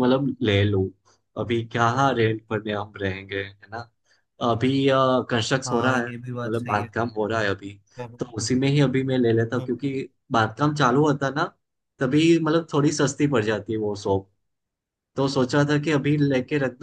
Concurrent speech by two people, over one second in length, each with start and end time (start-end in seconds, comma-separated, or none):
5.7-6.9